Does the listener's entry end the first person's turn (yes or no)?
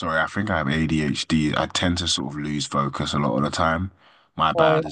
no